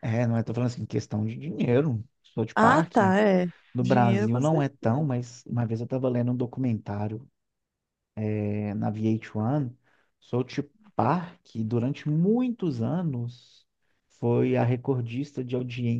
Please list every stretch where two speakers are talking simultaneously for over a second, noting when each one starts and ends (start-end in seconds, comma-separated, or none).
3.7-5.1